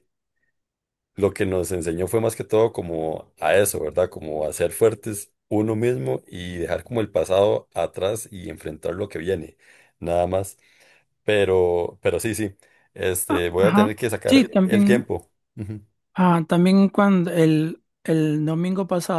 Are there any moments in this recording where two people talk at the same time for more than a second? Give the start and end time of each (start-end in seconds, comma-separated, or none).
13.3-15.0